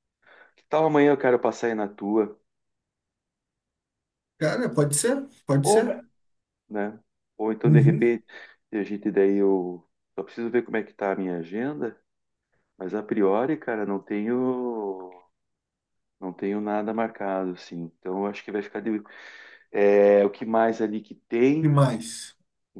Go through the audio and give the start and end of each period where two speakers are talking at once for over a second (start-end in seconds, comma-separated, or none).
none